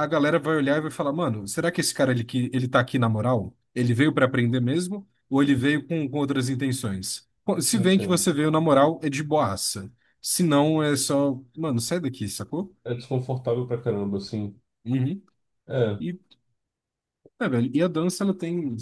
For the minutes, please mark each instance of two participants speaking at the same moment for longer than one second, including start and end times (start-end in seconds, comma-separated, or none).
none